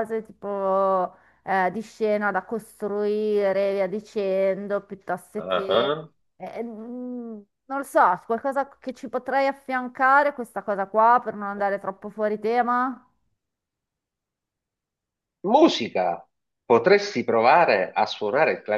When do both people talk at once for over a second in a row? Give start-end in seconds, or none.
none